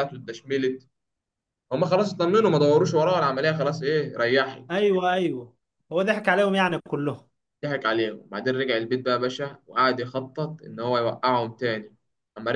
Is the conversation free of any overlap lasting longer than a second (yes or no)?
yes